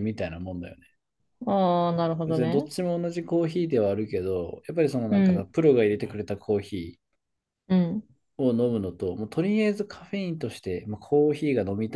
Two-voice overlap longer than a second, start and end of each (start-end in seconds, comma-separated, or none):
none